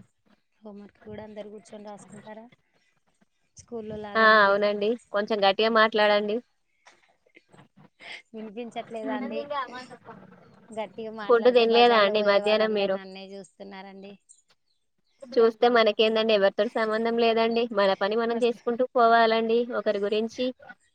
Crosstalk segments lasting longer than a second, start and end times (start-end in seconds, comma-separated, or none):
11.3-12.9